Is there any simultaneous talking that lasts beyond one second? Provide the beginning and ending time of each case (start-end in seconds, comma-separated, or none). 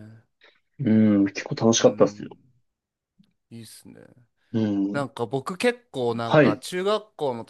none